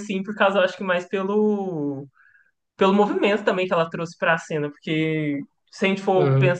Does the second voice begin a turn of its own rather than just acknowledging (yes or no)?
no